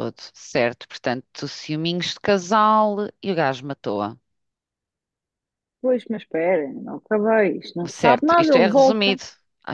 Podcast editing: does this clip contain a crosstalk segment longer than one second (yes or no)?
yes